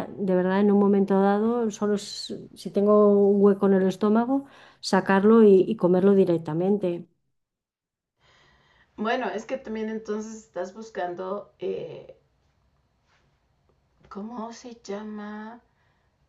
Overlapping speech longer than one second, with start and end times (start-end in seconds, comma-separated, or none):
none